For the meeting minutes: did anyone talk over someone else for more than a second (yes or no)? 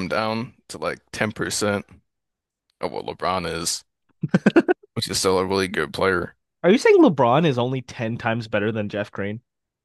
no